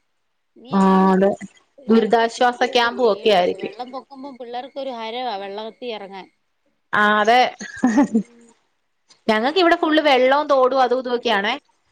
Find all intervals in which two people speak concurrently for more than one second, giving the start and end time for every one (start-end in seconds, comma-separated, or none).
1.9-3.7